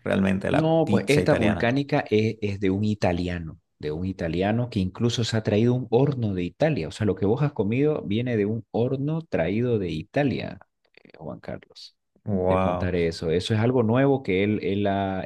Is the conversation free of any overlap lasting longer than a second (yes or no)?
no